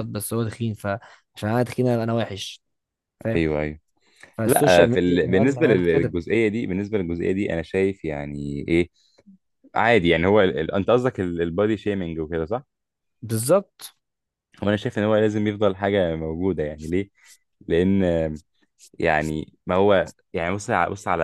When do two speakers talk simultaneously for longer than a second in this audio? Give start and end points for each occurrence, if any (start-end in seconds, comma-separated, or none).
4.5-6.1